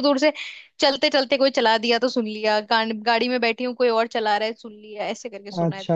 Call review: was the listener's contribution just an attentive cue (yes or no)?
no